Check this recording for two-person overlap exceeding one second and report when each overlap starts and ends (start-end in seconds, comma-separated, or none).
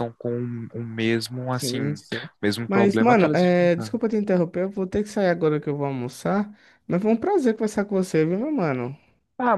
2.7-4.0